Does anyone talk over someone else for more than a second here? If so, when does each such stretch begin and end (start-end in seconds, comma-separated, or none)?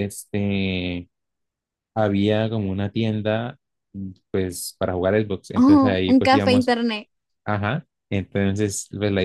5.5-6.8